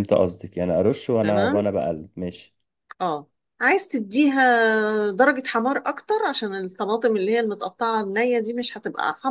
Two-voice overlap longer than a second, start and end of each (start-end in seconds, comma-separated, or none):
none